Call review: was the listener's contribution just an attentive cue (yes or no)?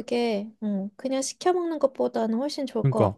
no